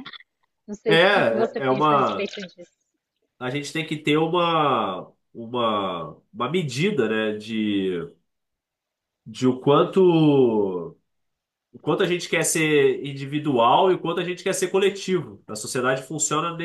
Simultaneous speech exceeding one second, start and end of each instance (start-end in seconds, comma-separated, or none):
0.9-2.3